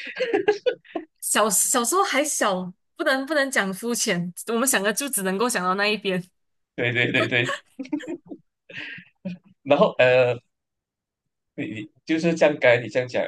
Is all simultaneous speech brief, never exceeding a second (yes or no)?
yes